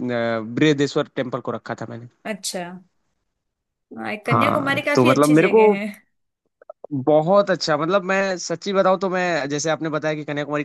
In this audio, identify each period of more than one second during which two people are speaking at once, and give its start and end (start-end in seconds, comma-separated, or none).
4.3-5.6